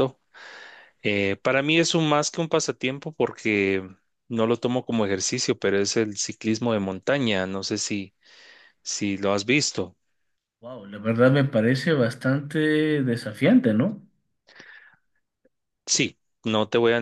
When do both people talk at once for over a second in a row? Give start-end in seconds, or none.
none